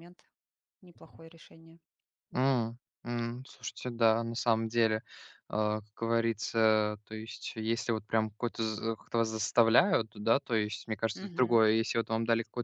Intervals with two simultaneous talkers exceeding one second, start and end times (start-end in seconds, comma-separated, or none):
none